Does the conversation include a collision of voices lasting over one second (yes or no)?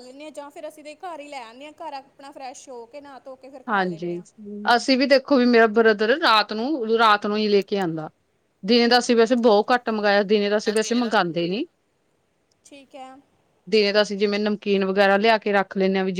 no